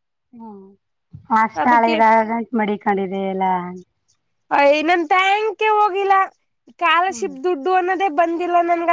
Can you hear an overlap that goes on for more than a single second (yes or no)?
no